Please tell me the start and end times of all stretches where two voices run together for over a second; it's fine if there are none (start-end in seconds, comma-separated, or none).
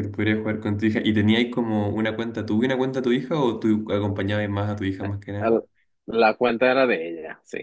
none